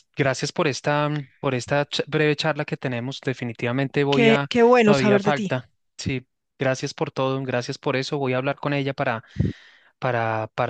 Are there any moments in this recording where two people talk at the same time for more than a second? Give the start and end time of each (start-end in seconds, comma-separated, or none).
4.1-5.6